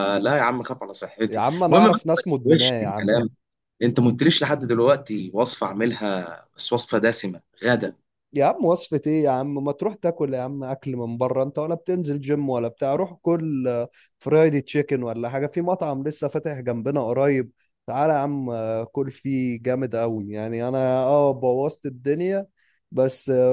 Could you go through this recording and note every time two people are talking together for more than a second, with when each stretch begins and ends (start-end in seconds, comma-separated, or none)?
1.3-3.1